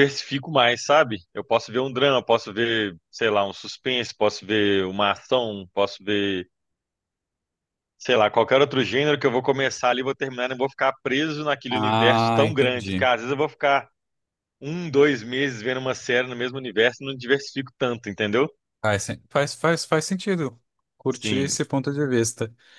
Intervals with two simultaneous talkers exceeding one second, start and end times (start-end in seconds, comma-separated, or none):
11.7-13.1